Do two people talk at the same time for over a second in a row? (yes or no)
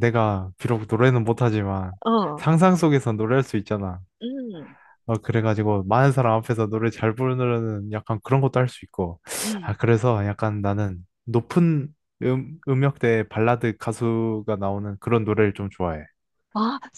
no